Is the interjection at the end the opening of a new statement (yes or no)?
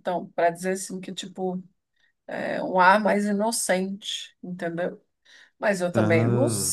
no